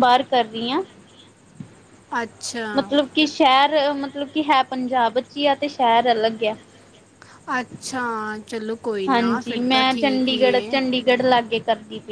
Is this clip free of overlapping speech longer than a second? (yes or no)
no